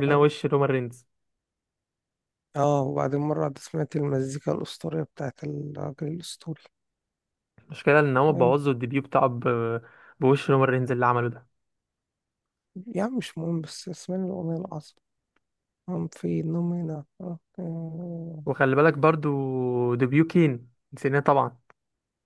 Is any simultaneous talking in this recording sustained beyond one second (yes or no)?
no